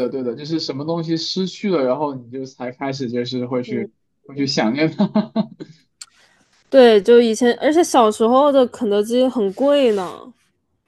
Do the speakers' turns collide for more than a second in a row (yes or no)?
no